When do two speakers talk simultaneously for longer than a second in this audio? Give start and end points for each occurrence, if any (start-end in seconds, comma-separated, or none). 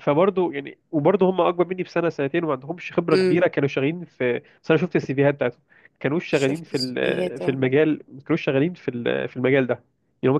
6.3-7.6